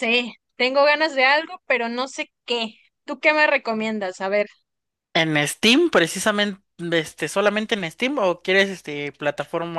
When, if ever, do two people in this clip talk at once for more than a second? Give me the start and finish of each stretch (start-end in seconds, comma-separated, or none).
none